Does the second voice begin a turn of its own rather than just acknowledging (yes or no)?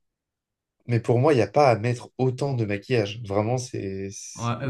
yes